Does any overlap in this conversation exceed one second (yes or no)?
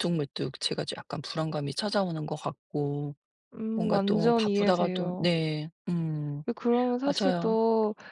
yes